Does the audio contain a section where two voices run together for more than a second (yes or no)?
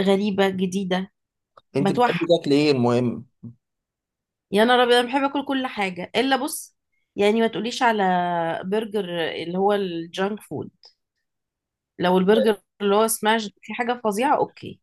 no